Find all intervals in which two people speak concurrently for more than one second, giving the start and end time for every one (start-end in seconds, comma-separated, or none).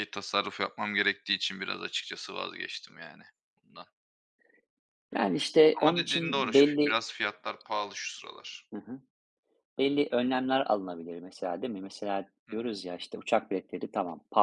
5.8-7.0